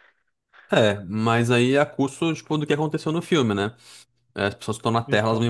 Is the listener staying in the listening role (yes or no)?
yes